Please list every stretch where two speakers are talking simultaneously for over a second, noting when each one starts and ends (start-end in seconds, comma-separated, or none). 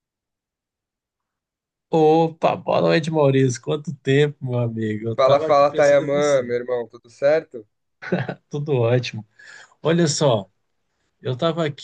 5.2-6.5